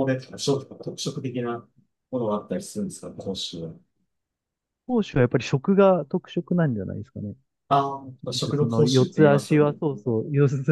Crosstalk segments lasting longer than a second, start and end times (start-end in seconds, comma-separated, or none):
8.3-9.8